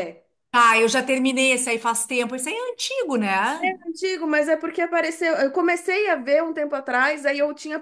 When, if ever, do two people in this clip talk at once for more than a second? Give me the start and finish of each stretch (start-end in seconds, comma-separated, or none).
none